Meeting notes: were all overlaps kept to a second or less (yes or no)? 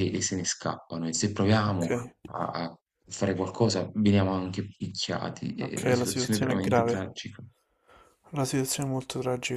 no